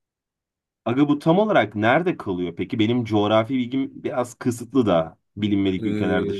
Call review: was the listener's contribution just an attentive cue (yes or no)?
no